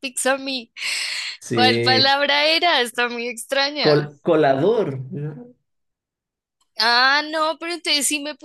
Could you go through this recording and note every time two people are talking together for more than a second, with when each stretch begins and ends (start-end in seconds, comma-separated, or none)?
none